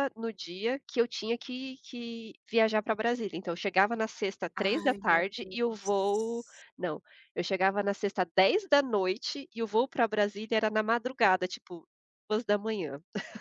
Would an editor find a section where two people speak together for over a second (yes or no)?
yes